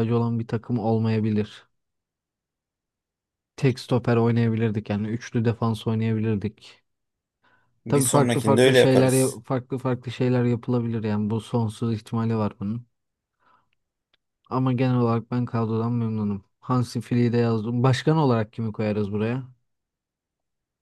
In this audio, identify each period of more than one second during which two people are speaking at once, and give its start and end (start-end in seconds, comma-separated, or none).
7.9-9.4